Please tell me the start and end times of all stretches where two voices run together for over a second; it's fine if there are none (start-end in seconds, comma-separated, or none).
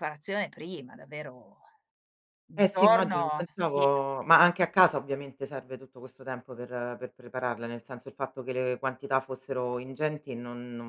2.6-4.1